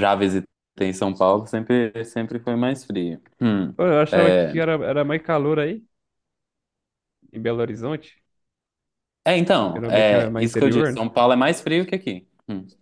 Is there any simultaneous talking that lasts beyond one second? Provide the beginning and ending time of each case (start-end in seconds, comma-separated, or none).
9.7-11.1